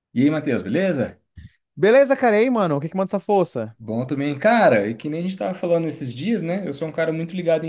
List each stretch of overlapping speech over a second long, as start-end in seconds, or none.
none